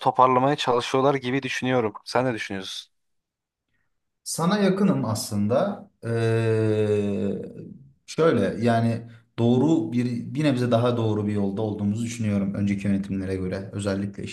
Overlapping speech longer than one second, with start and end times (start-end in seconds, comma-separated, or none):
none